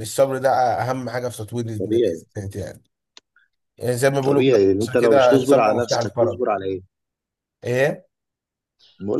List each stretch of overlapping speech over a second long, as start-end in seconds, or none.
4.2-6.4